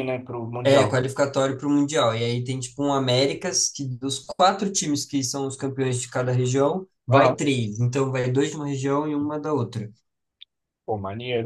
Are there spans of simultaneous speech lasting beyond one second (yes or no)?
no